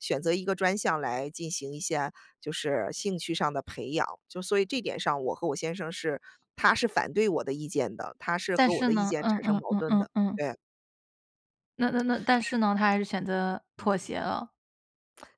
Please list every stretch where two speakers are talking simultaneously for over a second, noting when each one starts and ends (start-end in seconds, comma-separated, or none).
8.6-10.4